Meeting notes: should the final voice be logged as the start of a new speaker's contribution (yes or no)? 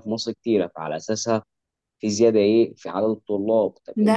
no